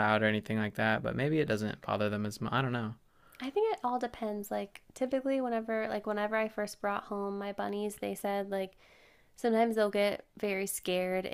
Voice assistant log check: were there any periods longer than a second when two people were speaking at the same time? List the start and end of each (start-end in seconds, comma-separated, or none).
none